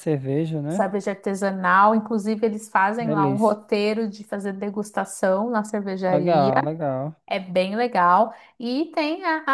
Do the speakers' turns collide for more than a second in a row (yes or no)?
no